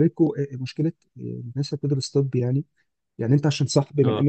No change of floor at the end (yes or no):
yes